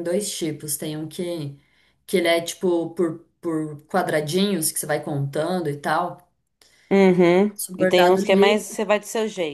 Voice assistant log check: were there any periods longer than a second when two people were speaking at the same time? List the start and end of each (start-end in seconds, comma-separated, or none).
7.5-8.8